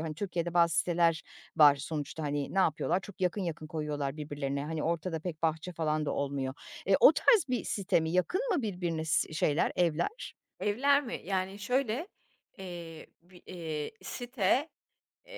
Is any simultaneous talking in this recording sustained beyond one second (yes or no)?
no